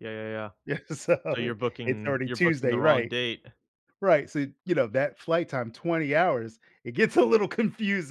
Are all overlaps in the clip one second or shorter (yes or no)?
no